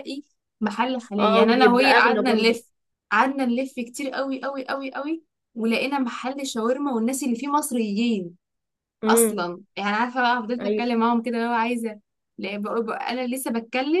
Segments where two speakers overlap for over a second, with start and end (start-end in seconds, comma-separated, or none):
1.2-2.6